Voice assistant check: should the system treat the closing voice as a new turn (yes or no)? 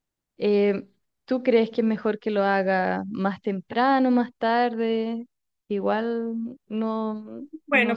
yes